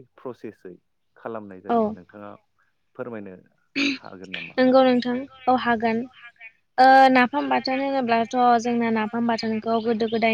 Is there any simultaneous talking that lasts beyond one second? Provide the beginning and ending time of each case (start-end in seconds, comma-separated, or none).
none